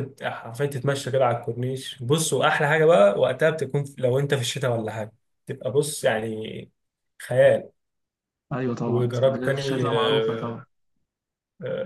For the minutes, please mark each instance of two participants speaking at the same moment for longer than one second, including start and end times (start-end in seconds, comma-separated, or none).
8.9-10.6